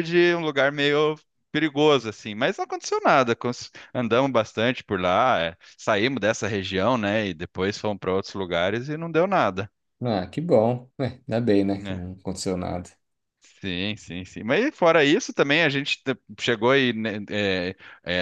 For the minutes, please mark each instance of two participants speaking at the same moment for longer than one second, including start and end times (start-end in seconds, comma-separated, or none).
none